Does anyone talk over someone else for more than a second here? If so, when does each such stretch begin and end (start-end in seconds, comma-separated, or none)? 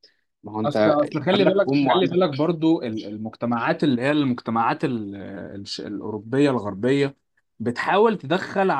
0.6-2.2